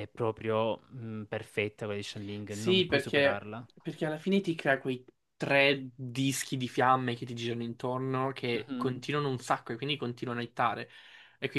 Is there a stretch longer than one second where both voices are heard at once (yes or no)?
yes